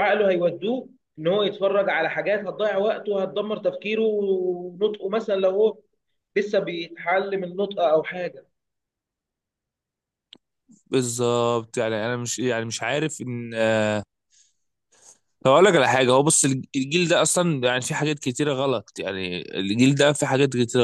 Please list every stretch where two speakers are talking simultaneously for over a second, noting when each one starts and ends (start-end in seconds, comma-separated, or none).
none